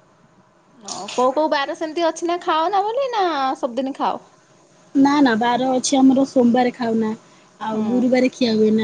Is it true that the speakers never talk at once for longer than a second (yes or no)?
yes